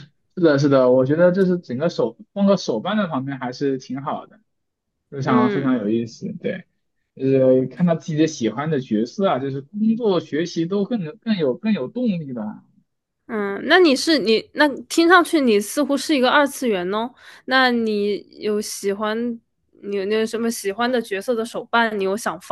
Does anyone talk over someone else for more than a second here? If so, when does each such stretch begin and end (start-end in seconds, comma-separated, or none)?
none